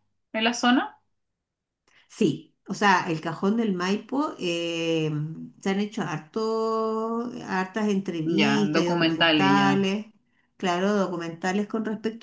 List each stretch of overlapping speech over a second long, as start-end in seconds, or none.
8.4-9.9